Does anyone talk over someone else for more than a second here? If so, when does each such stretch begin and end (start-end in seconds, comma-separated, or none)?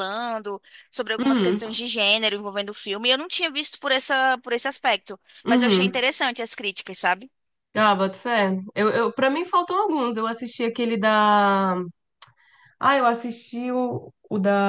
none